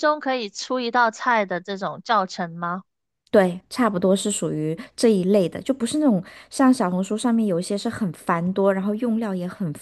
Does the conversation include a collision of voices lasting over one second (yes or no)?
no